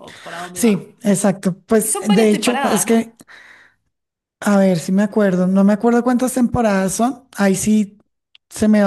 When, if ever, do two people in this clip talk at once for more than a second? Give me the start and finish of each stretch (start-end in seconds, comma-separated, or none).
1.8-3.0